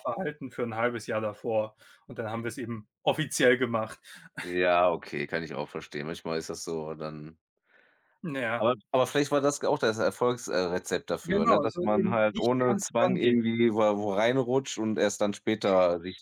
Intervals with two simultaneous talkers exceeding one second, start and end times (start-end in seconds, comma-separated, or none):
11.2-13.4